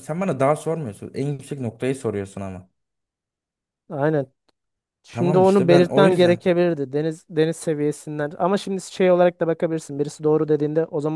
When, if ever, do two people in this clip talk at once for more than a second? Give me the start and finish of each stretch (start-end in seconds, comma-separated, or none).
5.1-6.4